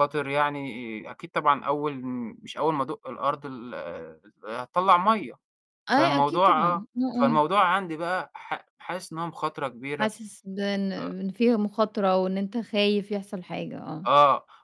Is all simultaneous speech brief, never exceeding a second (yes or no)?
no